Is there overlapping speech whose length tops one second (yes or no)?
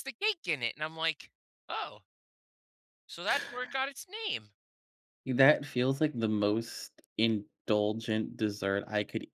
no